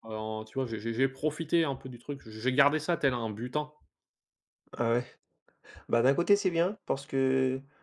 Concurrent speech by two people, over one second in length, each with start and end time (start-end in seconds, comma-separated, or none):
none